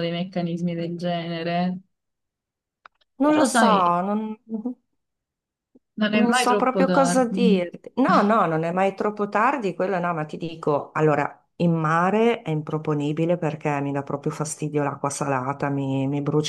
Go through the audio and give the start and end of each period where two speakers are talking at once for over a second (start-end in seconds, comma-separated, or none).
6.1-7.7